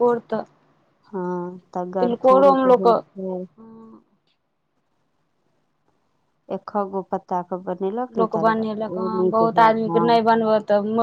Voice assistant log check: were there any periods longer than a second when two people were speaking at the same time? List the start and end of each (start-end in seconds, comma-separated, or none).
2.0-3.4